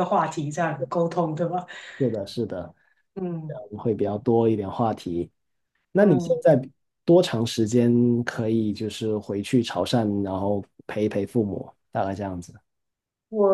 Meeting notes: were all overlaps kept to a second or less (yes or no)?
yes